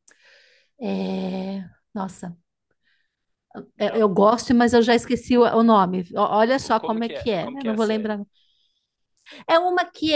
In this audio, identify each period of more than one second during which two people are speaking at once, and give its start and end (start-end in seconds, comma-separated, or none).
6.6-8.2